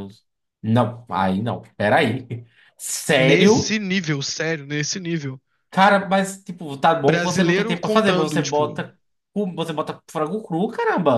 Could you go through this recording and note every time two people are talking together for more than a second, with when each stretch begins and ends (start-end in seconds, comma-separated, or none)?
7.0-8.8